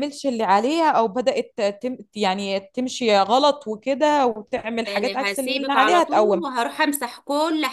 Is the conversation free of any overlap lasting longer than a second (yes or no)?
no